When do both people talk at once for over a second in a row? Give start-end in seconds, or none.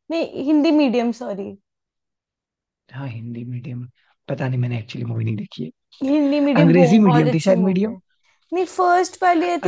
6.6-8.0